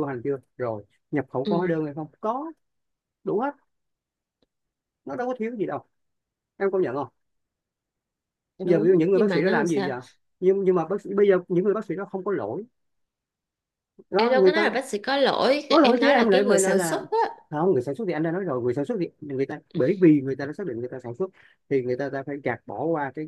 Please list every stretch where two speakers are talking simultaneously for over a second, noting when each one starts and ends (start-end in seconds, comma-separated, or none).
8.7-9.9, 15.7-17.1